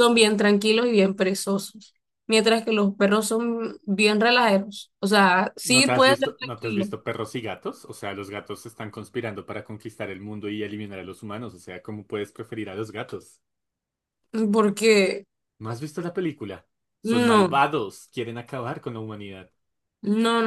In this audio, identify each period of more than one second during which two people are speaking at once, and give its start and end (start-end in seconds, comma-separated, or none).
5.6-6.9